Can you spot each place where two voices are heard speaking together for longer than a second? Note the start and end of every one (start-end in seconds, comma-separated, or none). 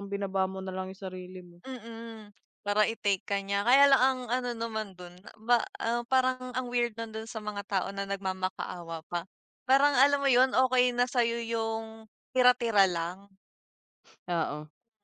none